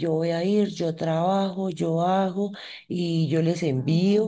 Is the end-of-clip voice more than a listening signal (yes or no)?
no